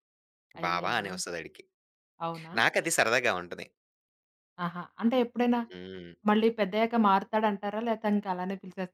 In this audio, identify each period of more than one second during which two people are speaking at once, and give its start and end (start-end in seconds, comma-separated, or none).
none